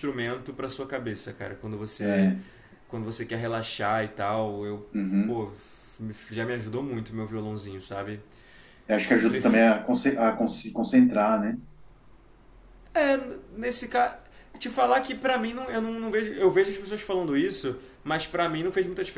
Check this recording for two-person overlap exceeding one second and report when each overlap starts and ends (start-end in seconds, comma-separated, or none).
none